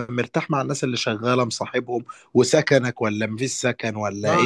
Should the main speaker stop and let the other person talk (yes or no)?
yes